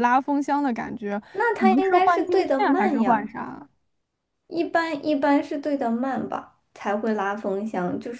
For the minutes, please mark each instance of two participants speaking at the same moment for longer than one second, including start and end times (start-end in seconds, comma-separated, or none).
1.6-3.3